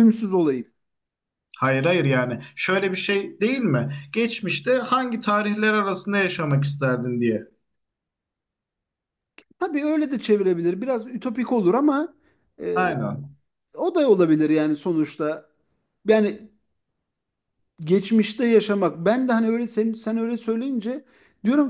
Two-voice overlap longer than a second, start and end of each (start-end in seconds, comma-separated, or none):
none